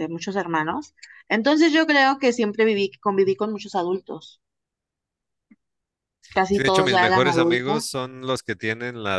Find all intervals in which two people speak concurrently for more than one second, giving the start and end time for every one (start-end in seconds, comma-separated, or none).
6.5-7.9